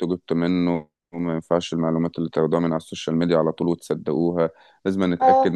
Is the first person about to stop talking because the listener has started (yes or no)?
no